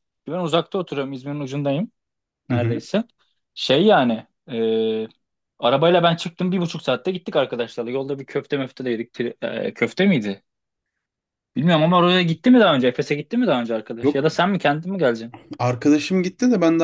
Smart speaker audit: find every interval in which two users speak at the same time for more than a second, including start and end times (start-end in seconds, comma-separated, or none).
none